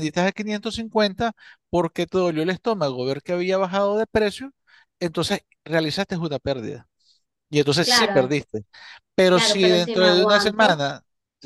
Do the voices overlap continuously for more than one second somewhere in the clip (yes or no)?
yes